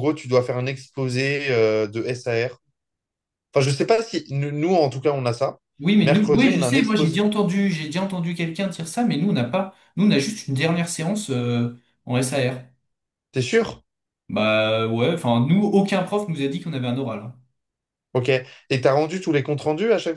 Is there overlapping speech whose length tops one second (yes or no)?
yes